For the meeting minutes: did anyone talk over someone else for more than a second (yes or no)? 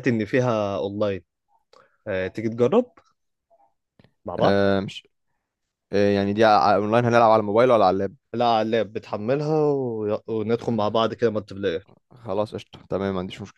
no